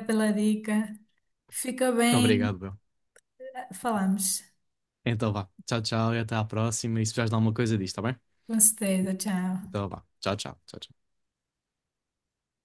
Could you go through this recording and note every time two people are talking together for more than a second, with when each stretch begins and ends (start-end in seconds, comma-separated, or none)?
none